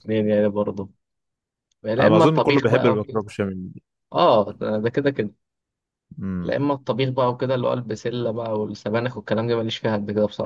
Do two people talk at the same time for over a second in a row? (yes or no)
yes